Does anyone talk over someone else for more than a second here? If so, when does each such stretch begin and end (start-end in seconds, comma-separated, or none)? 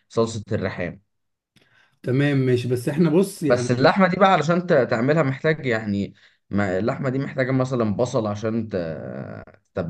none